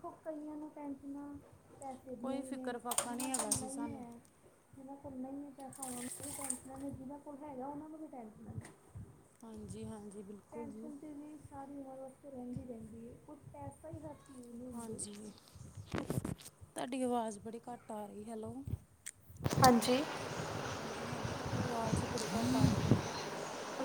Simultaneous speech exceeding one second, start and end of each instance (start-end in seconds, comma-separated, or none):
2.2-4.0